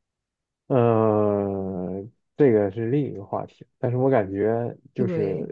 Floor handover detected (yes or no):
no